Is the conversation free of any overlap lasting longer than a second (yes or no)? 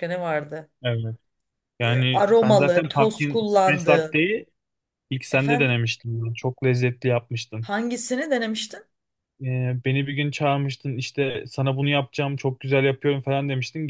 no